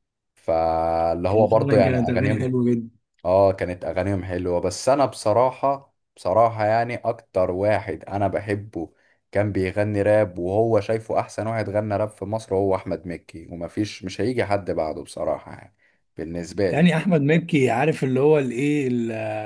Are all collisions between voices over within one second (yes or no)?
no